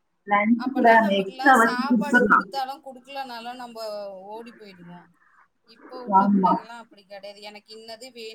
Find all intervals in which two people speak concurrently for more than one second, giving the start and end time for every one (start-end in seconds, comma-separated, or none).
0.6-2.5